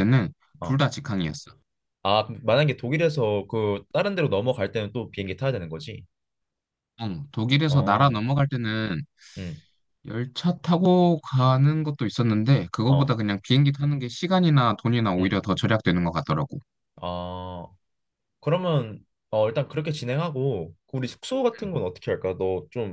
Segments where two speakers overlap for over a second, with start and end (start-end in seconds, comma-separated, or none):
none